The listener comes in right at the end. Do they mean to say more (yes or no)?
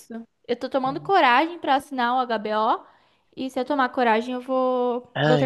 yes